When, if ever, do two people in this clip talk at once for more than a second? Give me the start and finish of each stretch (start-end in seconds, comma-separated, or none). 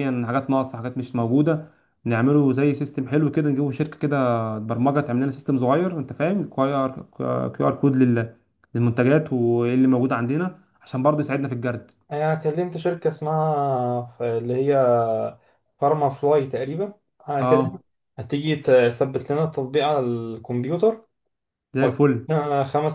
none